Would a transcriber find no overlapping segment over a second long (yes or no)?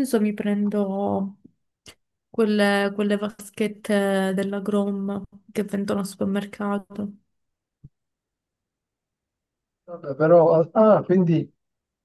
yes